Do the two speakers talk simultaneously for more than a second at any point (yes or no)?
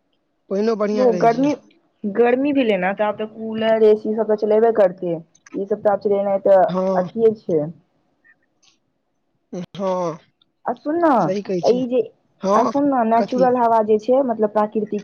no